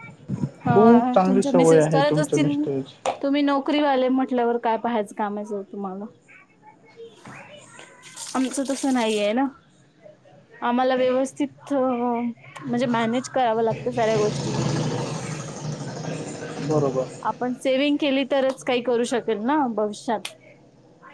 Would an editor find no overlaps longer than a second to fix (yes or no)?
no